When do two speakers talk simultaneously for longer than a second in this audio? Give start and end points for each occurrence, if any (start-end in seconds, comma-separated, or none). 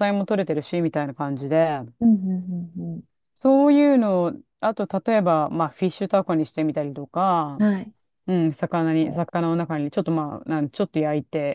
none